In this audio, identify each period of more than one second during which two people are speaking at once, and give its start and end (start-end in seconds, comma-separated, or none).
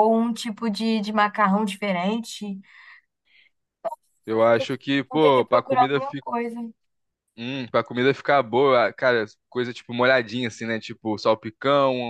4.3-6.0